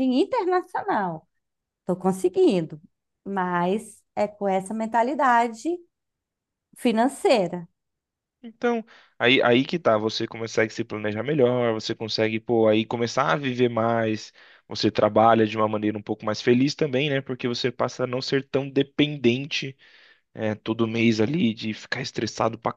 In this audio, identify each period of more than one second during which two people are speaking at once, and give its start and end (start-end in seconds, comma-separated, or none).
none